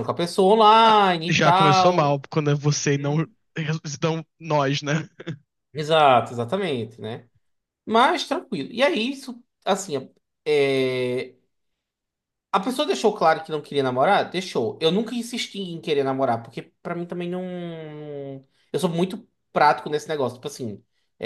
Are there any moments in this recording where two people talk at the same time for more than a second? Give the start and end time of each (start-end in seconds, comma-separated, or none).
0.8-2.3